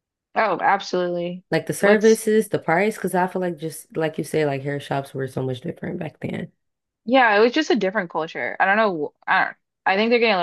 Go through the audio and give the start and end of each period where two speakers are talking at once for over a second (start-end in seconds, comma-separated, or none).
none